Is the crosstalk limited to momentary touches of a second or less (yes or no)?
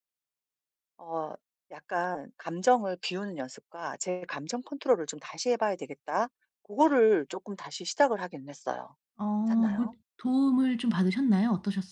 yes